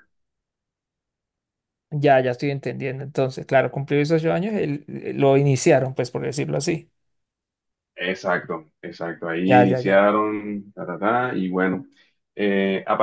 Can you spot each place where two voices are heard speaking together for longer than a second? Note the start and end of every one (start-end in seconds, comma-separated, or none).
none